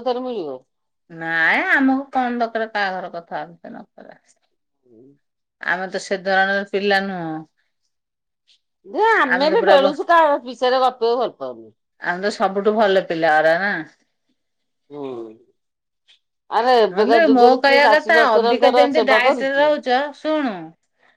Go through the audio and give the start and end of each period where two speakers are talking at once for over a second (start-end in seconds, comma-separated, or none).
17.0-19.6